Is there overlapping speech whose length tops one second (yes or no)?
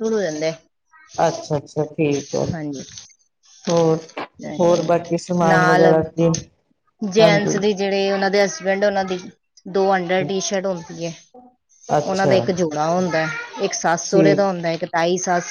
no